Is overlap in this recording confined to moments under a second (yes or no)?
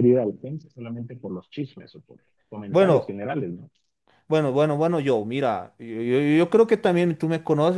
yes